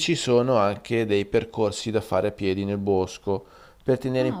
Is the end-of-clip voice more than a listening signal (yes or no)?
no